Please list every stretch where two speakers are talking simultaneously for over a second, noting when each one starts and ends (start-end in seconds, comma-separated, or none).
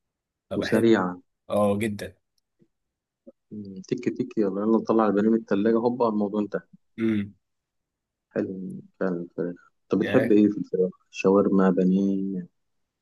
none